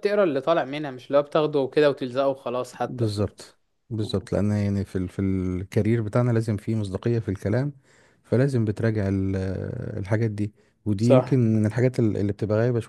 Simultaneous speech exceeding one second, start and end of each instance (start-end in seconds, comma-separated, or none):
none